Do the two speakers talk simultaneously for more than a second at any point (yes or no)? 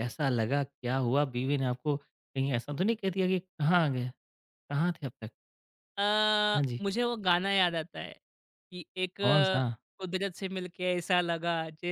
no